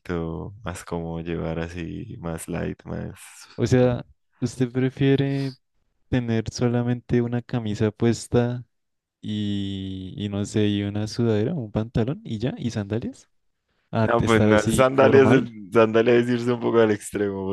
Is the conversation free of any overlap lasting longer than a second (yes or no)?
no